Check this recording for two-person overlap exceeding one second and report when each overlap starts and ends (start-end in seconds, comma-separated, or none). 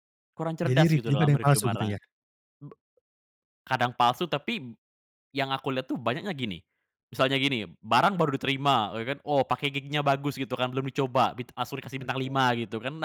0.7-2.0